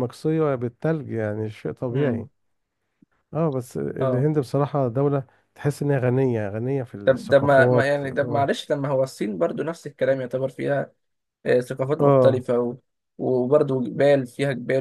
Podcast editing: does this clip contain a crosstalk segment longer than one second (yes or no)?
yes